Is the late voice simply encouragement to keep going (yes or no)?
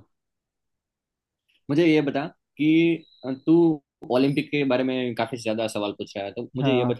yes